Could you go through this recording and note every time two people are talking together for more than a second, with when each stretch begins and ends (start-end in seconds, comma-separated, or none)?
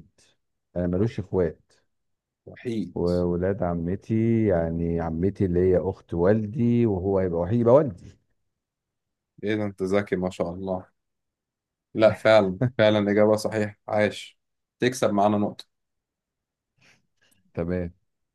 none